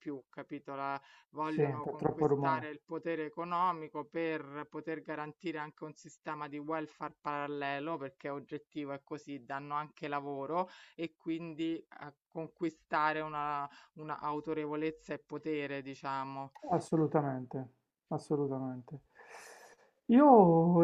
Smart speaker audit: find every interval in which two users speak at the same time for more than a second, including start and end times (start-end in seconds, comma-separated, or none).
1.5-2.7